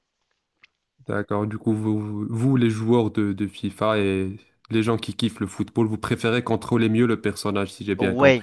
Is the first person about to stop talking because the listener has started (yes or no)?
yes